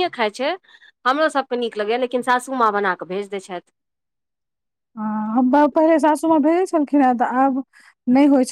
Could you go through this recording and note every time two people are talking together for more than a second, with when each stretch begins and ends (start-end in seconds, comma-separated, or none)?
none